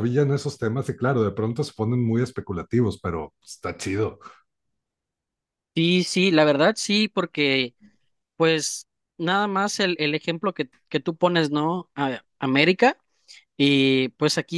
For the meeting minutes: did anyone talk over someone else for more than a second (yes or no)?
no